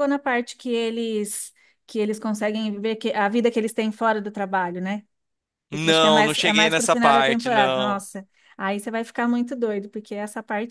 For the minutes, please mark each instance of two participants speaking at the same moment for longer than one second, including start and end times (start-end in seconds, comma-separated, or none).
5.7-8.0